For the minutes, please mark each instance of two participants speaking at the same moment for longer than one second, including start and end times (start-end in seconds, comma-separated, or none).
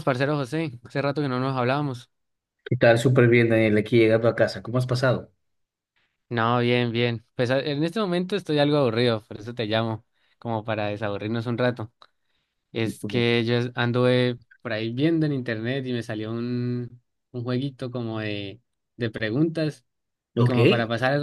none